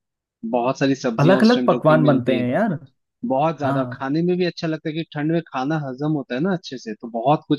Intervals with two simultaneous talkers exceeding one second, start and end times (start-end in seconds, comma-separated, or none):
1.2-2.5